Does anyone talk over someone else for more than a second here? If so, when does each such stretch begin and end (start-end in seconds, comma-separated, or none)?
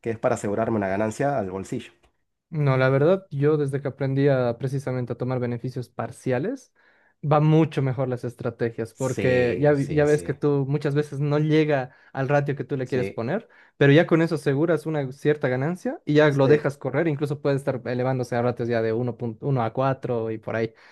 8.9-10.4